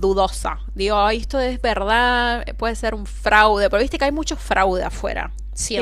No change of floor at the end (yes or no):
no